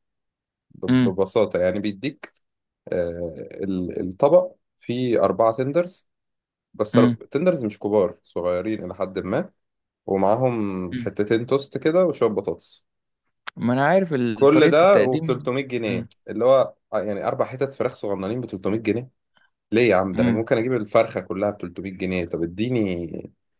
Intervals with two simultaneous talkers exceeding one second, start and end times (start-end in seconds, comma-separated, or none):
14.3-16.1